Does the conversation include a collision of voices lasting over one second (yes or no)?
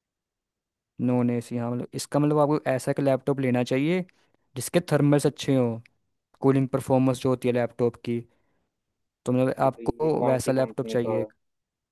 yes